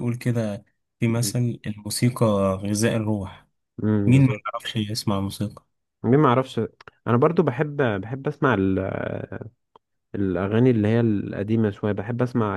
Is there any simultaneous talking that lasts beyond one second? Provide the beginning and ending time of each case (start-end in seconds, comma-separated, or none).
none